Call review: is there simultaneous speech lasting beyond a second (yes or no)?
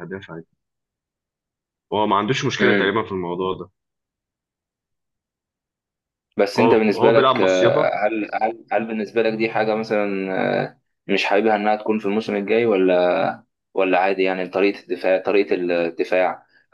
yes